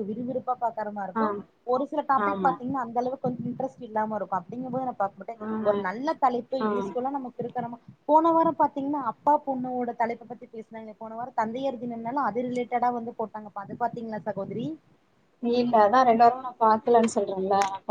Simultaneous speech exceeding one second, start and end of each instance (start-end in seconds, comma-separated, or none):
none